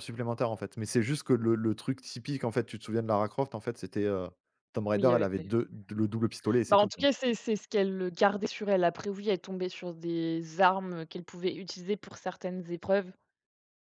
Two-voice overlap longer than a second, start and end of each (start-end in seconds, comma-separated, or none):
none